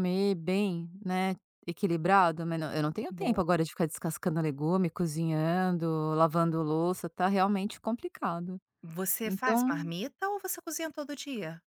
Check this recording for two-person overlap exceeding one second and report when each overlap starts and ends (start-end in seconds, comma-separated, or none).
none